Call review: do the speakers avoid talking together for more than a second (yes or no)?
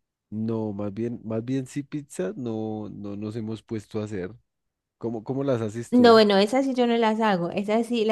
yes